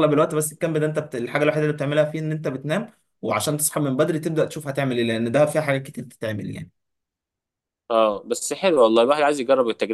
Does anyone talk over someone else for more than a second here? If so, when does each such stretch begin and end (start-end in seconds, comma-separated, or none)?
none